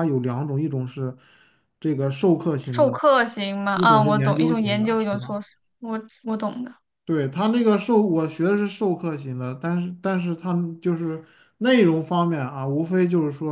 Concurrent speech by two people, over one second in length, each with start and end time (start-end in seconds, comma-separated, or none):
3.7-5.3